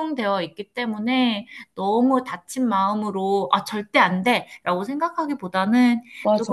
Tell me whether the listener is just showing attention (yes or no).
yes